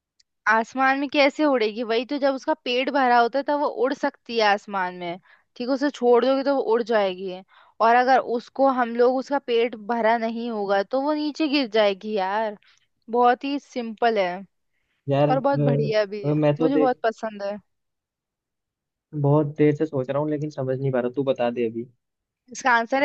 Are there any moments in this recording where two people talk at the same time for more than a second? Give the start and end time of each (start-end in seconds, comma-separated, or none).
15.3-17.0